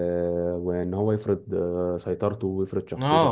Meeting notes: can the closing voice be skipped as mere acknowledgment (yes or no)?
no